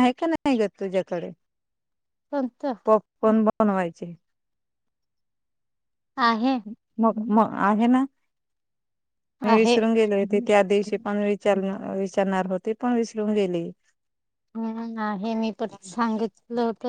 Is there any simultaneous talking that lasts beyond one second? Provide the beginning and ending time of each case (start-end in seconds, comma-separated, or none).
none